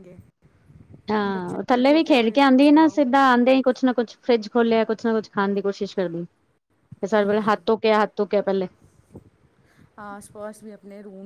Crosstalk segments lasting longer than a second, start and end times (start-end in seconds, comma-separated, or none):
1.3-3.0